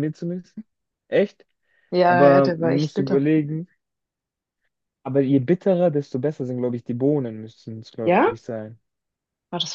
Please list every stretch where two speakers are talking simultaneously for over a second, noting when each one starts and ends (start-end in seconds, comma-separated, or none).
2.0-3.2